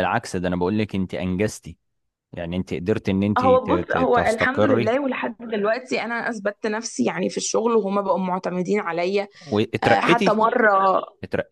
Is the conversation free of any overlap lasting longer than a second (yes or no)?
no